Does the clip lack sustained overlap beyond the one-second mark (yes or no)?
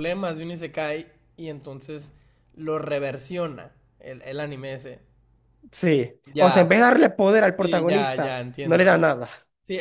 no